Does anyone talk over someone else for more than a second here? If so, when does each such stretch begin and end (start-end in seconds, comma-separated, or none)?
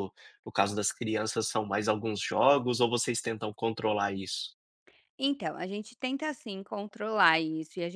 none